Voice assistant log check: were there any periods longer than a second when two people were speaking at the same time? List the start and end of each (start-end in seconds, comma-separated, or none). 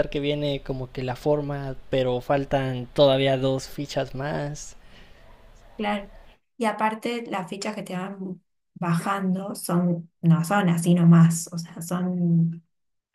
none